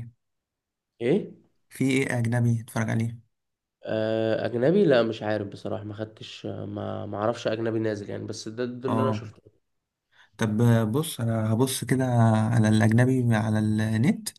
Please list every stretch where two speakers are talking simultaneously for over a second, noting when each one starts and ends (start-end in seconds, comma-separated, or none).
none